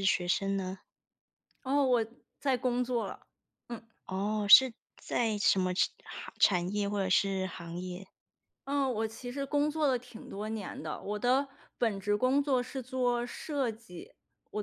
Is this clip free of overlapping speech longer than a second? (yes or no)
yes